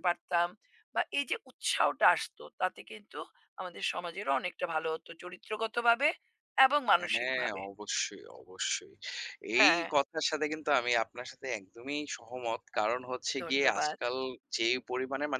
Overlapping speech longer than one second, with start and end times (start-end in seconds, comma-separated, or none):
none